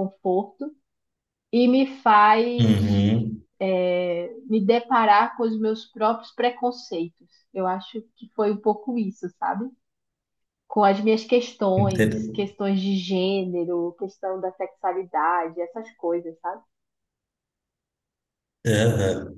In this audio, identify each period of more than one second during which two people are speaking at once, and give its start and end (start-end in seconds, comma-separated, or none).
none